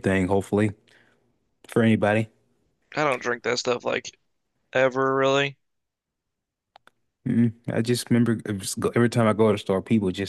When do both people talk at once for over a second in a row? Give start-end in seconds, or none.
none